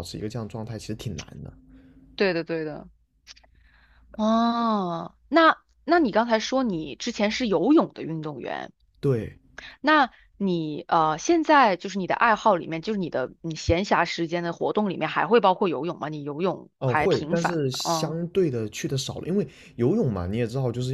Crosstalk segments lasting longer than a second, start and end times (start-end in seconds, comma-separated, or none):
16.8-18.1